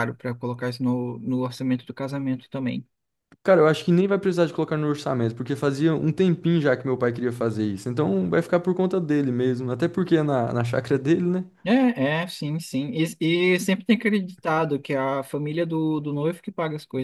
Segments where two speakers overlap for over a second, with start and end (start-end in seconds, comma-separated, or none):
none